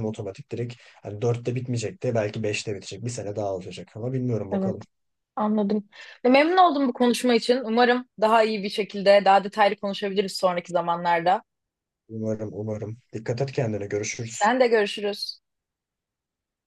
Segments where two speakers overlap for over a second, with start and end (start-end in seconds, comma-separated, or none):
none